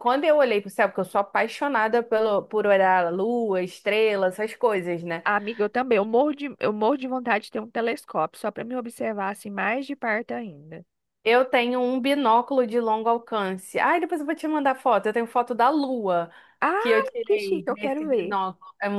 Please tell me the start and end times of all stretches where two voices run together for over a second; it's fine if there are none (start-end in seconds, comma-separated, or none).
16.8-18.4